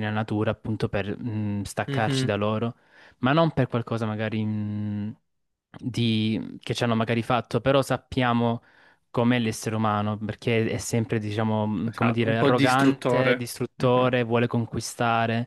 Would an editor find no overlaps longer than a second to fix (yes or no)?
no